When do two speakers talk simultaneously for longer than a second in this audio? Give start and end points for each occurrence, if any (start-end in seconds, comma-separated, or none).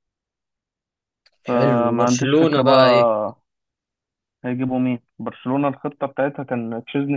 1.5-3.0